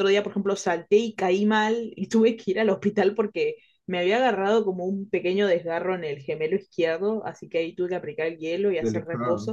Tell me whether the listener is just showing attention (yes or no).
yes